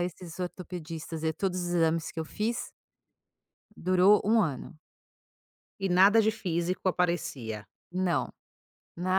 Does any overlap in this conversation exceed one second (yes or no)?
no